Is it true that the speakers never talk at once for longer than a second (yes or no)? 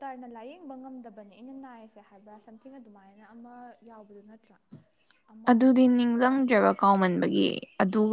yes